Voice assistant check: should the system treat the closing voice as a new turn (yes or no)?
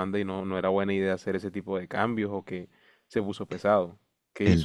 yes